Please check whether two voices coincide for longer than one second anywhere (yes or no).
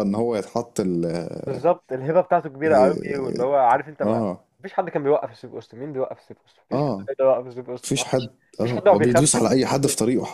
yes